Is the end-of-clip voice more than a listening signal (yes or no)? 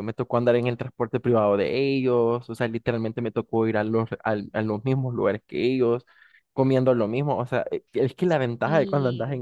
no